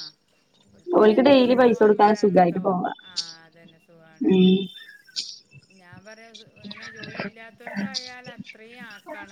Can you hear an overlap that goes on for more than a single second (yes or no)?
yes